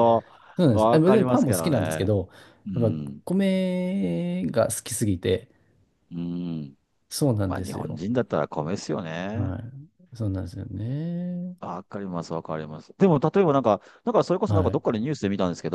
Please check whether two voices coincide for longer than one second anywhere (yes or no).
yes